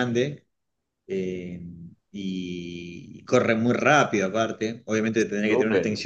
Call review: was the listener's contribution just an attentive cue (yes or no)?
yes